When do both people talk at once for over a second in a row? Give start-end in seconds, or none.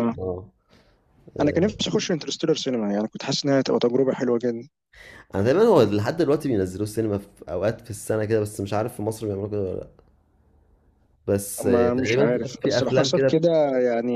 11.6-13.5